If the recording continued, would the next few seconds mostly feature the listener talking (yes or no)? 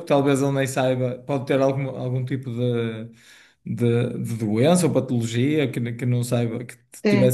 no